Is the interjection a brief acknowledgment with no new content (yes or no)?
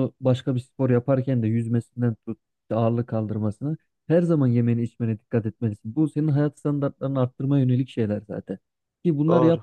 yes